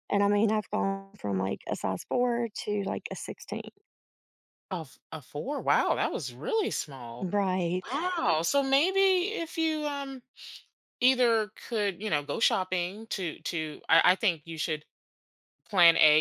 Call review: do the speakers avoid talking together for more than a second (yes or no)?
yes